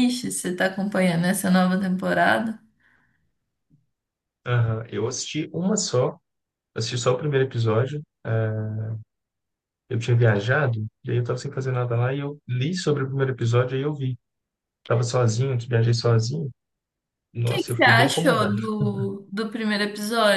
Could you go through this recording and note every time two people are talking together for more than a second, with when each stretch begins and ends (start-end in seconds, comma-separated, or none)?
17.3-18.5